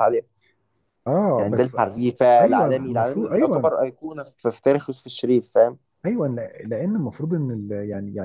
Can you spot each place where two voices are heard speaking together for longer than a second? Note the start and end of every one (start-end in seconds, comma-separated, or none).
2.4-3.7